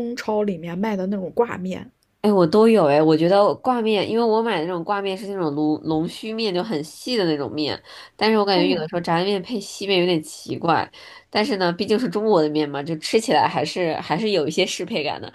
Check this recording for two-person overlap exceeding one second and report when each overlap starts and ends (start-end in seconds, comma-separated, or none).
none